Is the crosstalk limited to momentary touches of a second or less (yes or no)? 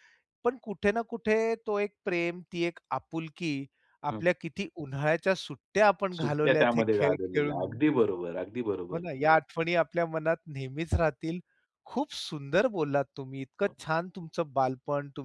no